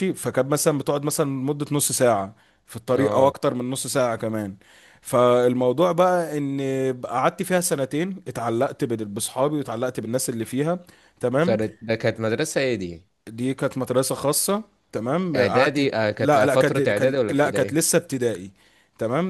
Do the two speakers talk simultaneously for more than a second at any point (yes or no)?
yes